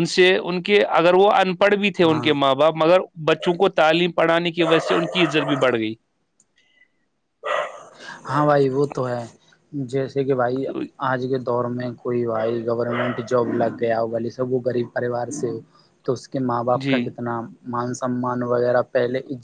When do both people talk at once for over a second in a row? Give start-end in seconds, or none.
none